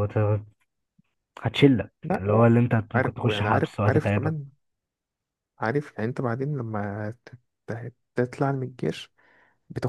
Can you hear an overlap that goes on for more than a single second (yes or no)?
yes